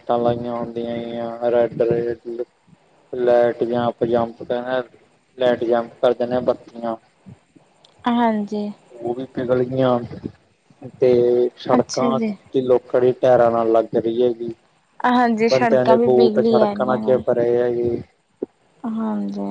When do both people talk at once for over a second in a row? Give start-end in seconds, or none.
15.5-17.2